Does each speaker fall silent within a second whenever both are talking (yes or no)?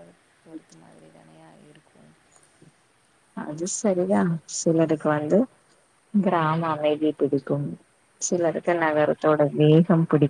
yes